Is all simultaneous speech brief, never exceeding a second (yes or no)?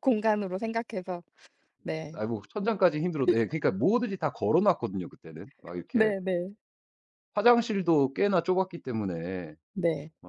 yes